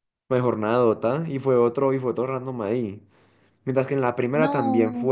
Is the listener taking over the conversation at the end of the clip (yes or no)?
no